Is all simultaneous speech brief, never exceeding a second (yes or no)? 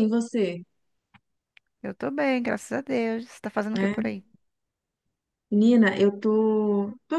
yes